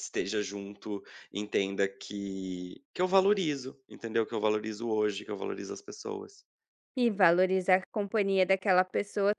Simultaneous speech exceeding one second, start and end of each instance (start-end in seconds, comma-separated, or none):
none